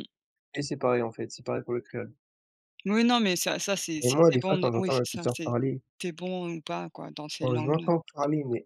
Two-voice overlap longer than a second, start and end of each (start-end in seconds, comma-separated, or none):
4.0-5.5